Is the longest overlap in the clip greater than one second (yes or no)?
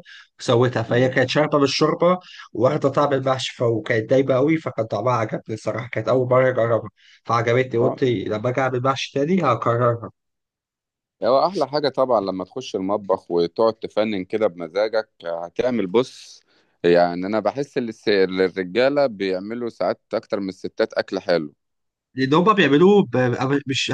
no